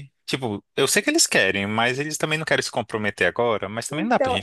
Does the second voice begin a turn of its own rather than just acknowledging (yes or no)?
yes